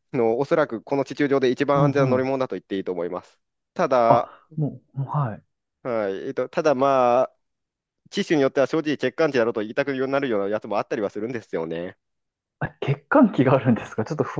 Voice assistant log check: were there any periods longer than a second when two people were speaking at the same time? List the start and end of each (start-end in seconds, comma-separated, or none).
none